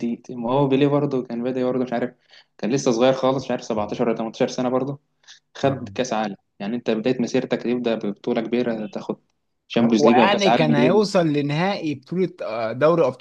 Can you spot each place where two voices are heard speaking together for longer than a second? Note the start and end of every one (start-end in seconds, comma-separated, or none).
9.8-11.1